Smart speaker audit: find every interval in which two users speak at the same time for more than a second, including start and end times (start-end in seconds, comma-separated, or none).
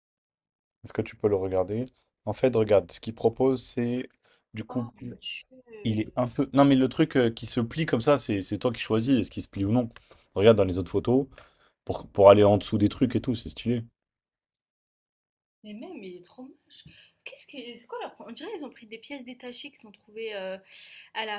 none